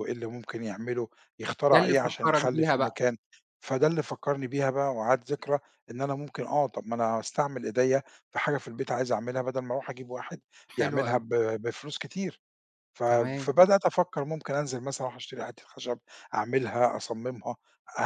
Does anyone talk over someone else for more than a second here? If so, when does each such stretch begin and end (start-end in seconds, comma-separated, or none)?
1.7-3.0